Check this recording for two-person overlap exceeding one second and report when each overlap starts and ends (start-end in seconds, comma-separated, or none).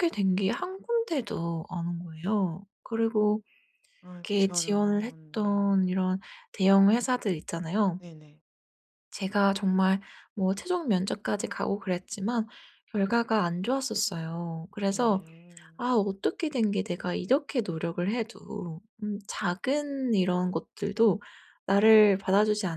4.3-6.0